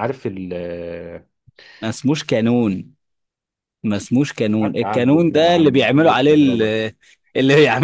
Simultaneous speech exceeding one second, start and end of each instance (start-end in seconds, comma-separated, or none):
4.6-6.6